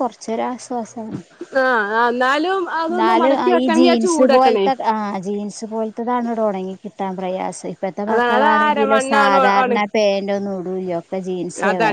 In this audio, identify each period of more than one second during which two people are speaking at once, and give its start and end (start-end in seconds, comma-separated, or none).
8.1-9.8